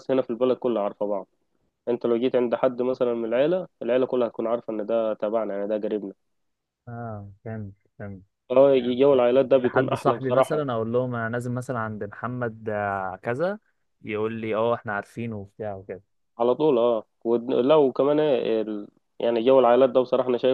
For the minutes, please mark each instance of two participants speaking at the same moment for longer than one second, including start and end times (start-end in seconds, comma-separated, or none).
9.1-10.6